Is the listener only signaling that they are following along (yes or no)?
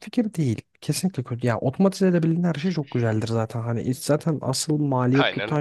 yes